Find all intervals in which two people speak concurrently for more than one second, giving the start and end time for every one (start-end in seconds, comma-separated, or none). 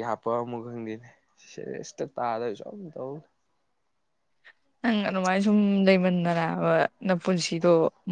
none